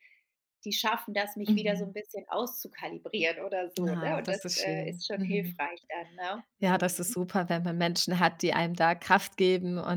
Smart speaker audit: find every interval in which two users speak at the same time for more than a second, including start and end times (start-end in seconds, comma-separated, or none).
3.9-5.6